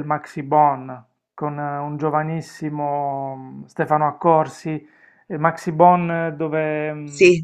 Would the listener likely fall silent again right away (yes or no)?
yes